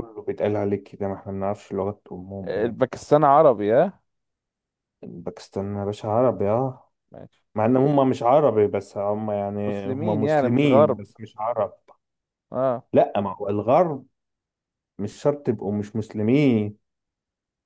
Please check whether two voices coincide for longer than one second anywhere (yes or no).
yes